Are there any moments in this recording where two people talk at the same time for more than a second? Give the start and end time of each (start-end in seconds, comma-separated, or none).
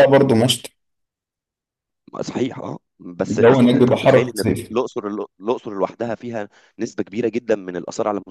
3.3-4.7